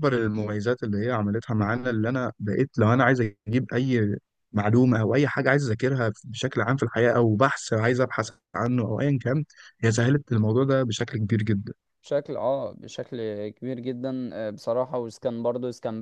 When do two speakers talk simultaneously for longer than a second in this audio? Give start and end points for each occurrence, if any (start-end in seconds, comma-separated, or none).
none